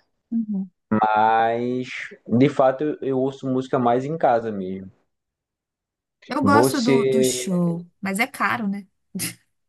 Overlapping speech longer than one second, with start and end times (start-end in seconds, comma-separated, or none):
none